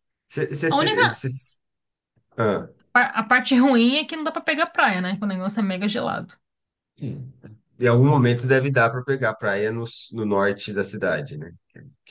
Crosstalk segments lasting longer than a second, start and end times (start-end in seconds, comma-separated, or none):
none